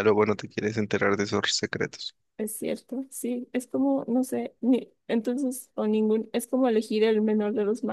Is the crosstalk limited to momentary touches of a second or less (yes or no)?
yes